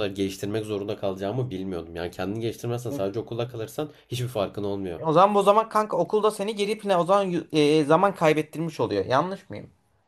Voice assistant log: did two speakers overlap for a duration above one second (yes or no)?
no